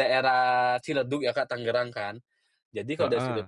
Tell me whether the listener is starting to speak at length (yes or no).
no